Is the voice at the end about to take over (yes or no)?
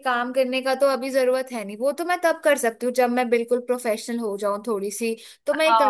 yes